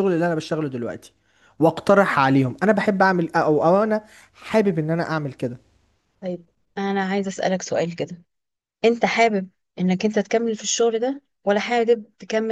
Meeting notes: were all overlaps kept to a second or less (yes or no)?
yes